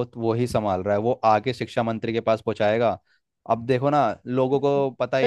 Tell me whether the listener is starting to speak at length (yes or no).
yes